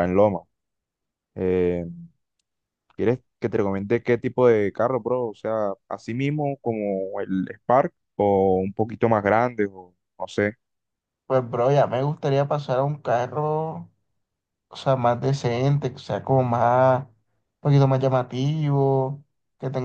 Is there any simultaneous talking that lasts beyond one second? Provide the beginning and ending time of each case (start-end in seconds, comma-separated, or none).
none